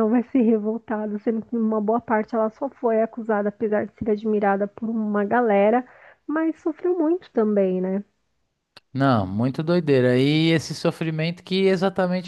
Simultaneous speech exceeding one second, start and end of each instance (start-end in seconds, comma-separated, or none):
none